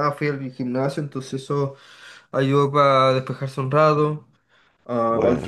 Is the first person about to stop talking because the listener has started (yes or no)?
no